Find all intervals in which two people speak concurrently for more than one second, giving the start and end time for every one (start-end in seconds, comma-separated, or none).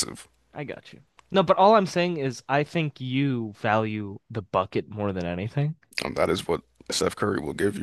none